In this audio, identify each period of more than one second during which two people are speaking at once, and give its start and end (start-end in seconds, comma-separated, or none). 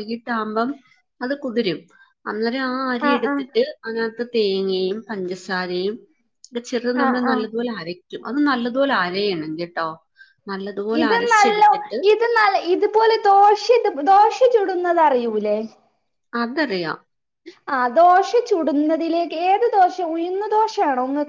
none